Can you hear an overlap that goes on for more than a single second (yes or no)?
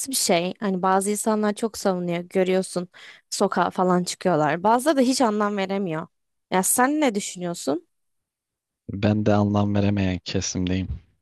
no